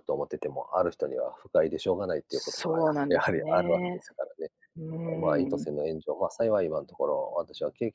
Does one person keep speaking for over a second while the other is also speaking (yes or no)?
yes